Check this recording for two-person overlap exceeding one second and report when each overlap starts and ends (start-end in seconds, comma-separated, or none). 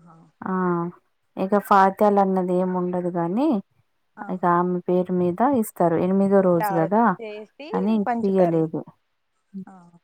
none